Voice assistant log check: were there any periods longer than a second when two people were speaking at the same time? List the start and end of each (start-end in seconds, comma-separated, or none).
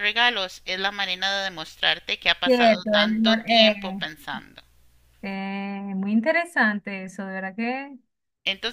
2.4-3.7